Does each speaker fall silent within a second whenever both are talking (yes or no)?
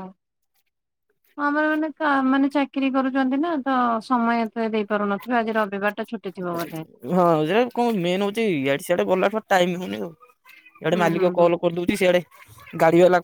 yes